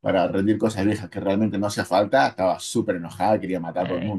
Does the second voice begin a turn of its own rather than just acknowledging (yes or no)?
yes